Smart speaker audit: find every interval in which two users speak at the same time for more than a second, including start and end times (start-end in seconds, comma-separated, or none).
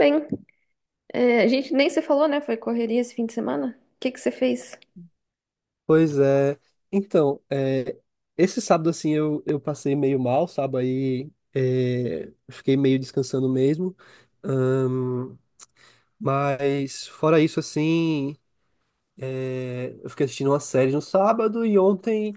none